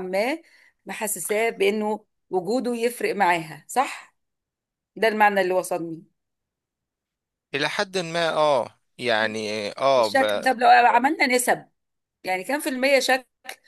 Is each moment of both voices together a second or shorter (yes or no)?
yes